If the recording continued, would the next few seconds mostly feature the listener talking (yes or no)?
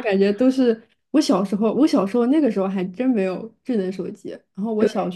no